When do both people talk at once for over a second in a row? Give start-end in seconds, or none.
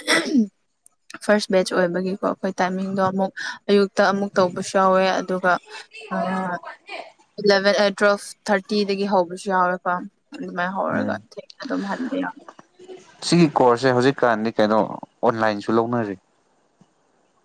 none